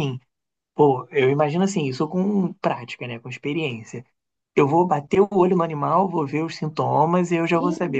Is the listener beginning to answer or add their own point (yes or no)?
no